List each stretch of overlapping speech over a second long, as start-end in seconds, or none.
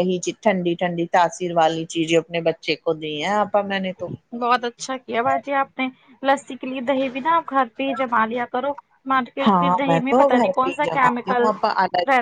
9.4-11.5